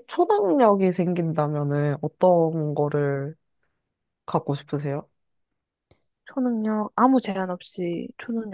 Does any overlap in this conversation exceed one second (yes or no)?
no